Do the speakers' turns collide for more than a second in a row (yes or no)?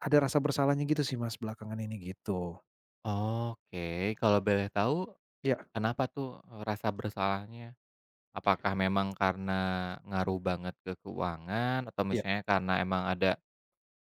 no